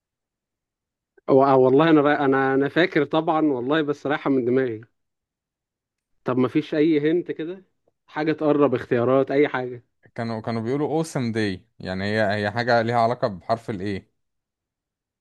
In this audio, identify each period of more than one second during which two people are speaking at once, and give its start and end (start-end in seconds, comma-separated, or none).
none